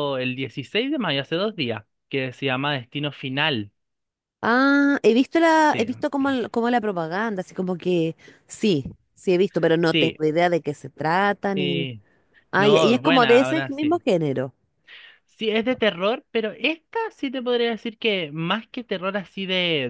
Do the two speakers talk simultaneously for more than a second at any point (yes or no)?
yes